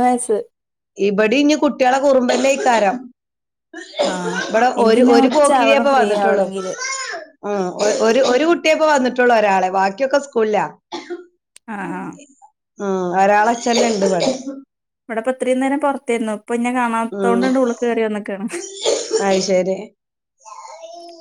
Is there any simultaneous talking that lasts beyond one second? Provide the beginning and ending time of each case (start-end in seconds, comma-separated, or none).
4.8-6.7